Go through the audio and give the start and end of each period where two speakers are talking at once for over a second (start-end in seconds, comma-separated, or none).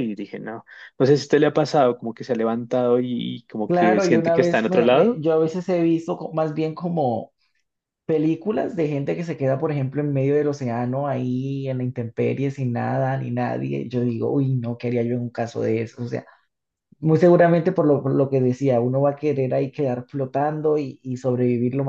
3.6-5.3